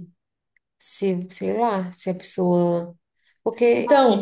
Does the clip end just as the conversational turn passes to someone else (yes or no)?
yes